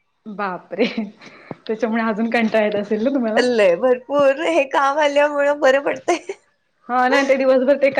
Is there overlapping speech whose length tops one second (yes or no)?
no